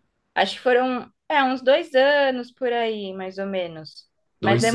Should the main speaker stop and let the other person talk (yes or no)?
no